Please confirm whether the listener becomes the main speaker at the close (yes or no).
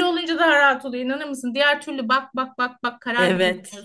yes